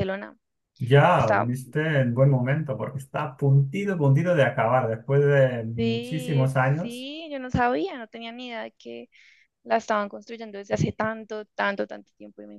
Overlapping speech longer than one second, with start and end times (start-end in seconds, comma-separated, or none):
5.7-7.1